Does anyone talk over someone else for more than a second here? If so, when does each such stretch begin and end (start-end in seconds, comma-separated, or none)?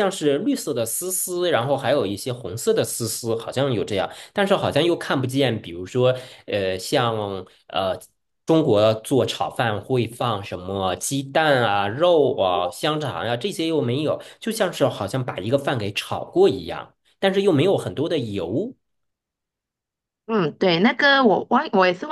none